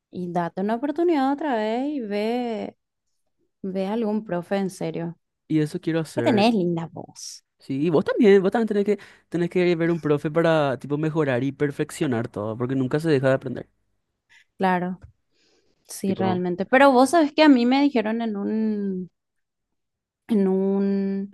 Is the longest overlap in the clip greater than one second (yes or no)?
no